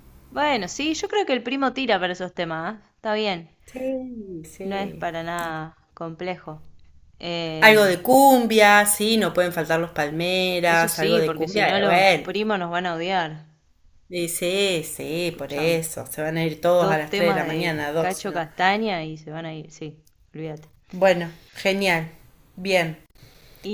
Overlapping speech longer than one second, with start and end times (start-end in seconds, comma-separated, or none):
10.7-12.3, 16.8-18.4